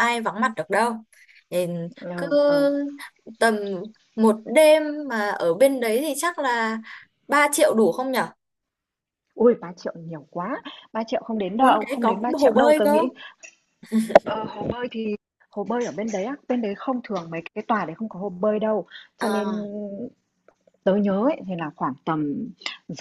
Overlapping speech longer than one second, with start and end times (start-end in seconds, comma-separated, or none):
11.6-13.0